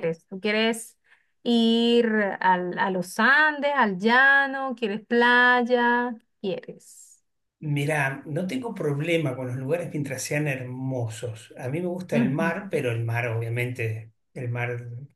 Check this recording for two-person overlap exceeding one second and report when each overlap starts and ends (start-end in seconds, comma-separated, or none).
none